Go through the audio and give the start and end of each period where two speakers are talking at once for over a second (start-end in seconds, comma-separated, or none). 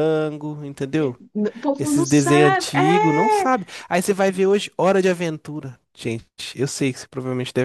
1.8-3.5